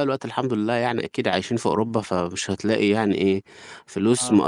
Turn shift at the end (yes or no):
no